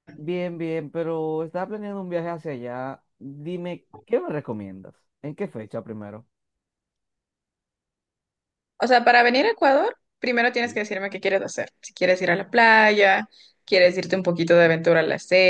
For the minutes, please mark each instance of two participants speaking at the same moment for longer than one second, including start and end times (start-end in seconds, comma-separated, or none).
none